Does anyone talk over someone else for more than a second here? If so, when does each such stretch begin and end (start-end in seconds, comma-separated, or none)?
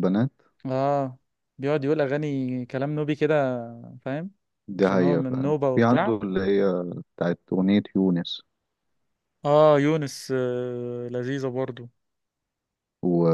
4.8-6.2